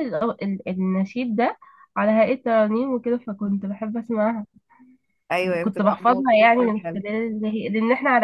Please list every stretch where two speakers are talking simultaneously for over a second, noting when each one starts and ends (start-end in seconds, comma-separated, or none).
5.6-7.0